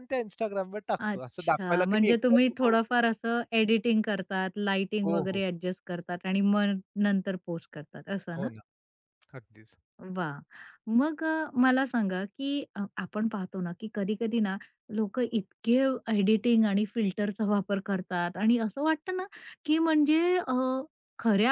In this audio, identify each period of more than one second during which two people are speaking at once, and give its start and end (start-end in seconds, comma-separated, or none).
1.0-3.1